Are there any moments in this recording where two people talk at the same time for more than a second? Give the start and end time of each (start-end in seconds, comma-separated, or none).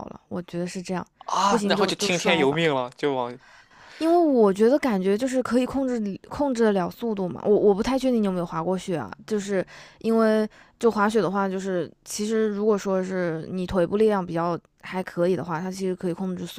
1.5-2.7